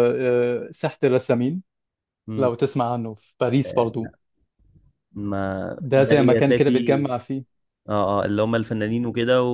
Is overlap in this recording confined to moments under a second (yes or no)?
no